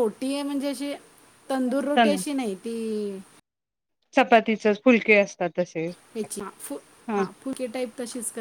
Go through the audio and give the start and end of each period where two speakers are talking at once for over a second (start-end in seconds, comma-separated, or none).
none